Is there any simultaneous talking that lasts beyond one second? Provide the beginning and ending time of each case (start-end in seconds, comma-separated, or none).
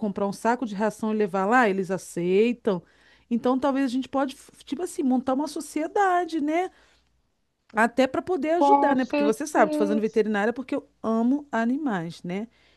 8.5-10.2